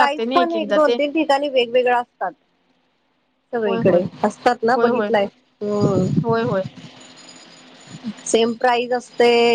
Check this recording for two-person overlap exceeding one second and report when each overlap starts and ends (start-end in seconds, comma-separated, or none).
none